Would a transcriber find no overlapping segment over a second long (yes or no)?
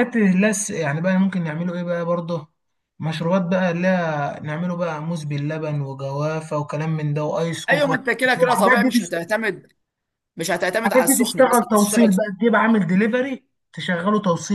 no